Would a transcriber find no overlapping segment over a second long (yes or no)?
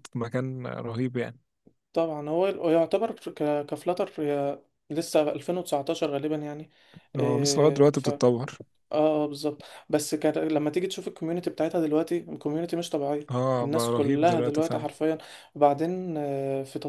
no